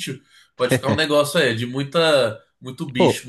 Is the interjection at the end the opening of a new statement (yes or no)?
yes